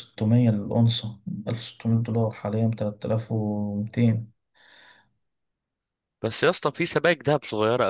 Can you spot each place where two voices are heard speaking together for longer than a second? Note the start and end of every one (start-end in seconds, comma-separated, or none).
none